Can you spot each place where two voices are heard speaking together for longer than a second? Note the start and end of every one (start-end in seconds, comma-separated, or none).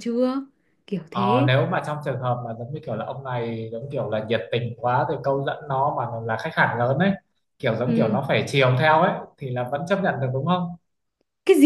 none